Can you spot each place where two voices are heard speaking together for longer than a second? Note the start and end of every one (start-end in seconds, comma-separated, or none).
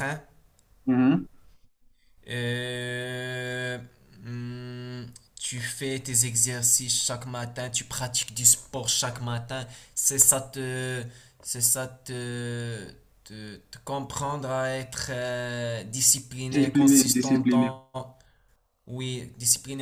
16.5-17.7